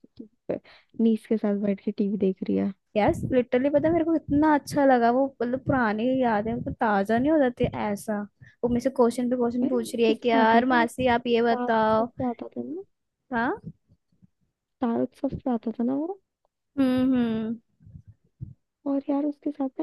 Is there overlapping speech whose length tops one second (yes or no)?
yes